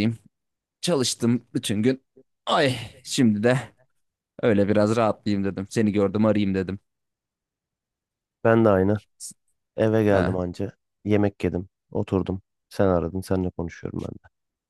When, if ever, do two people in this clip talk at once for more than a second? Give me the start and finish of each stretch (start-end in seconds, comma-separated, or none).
none